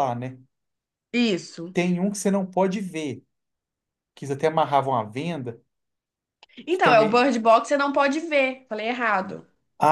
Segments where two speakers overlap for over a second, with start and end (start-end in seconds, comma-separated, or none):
none